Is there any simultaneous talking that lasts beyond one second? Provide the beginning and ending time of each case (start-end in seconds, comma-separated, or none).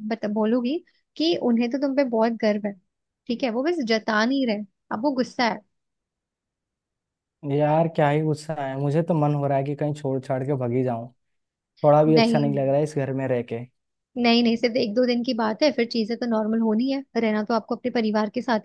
none